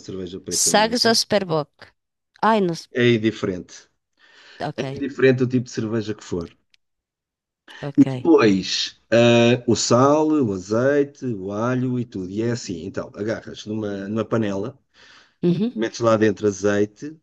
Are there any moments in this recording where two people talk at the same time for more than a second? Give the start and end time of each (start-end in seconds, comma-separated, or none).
none